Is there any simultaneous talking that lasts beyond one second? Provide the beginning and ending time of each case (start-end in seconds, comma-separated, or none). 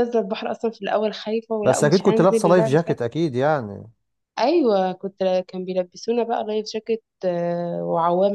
1.6-3.0